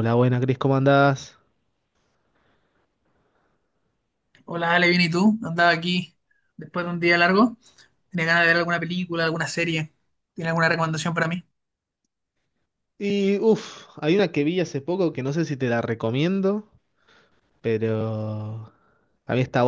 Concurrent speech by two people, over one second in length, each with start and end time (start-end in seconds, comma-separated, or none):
none